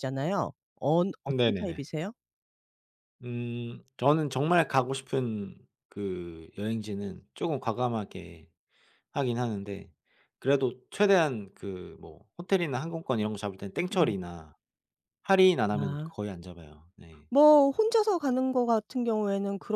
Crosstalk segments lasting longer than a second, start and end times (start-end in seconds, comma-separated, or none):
none